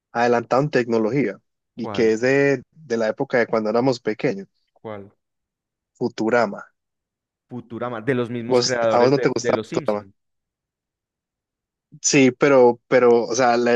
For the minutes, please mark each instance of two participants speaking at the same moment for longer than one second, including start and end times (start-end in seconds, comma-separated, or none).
8.5-10.1